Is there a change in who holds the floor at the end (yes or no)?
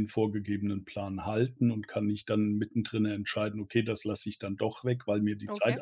no